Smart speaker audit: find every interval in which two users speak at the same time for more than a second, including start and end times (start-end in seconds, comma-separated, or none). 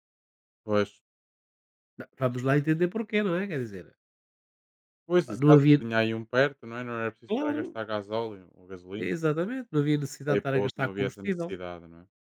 10.3-11.6